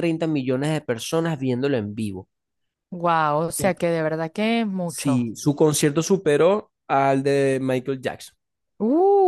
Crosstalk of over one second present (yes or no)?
no